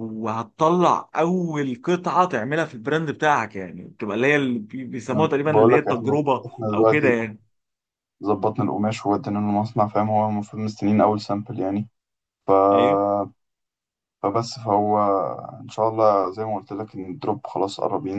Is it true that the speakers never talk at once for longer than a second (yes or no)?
no